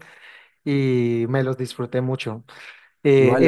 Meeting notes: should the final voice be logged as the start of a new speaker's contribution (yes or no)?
yes